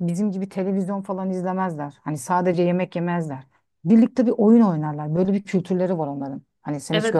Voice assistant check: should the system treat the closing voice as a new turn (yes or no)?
yes